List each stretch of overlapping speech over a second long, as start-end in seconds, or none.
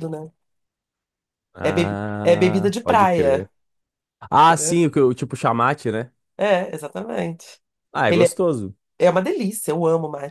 1.6-3.5